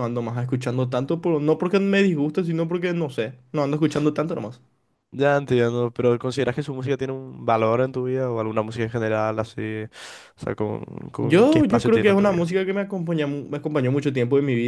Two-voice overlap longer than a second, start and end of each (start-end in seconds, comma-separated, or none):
11.2-12.6